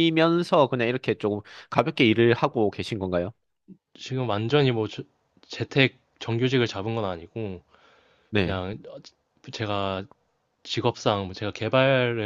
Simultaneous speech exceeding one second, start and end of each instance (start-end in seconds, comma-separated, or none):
none